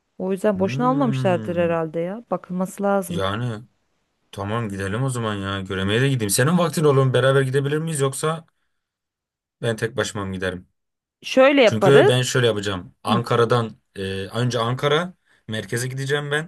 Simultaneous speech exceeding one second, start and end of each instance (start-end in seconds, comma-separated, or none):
0.5-1.8